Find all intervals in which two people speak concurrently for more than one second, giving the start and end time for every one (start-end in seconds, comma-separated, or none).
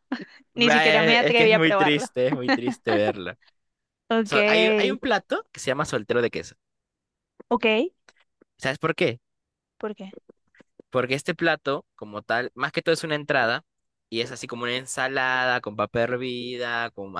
0.5-2.1